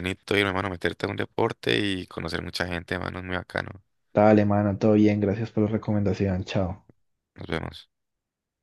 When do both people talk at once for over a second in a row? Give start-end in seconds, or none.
none